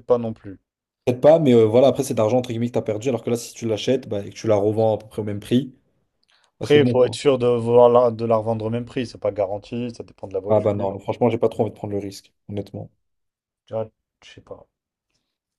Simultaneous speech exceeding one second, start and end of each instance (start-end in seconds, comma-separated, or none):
none